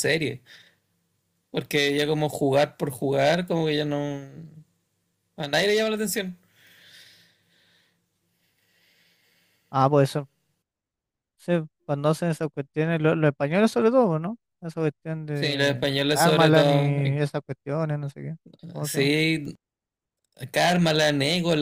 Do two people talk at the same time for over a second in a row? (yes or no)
yes